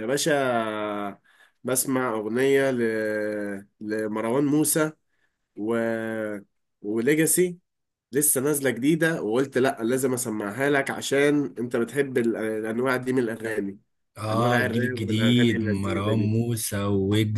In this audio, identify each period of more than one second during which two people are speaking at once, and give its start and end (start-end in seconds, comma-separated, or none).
14.3-16.3